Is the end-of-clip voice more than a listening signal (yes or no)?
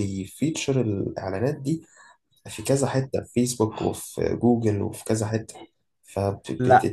no